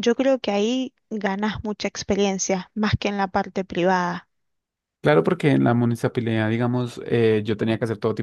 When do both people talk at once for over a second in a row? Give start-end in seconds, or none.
none